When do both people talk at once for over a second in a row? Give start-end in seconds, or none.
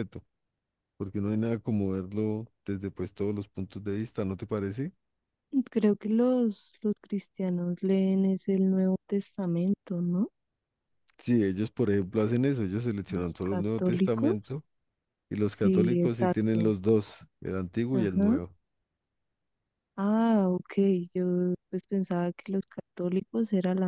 13.1-14.4, 15.4-16.8